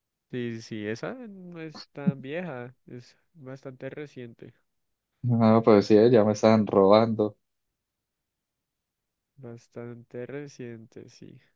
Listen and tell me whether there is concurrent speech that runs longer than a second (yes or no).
no